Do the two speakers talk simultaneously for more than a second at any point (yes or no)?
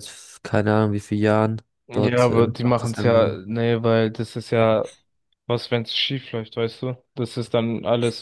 yes